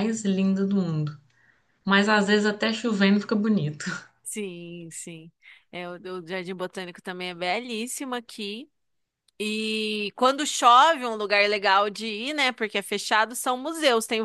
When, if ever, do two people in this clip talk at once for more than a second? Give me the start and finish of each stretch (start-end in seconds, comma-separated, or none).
none